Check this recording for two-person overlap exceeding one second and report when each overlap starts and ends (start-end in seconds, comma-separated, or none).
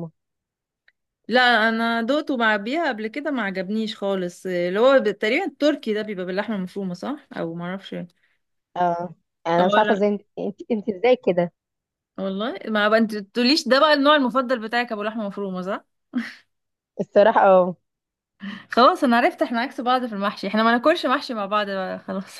none